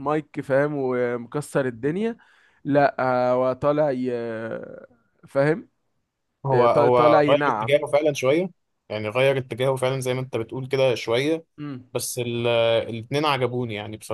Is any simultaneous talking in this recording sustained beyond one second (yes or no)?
yes